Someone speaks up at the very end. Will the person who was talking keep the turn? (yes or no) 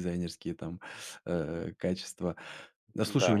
yes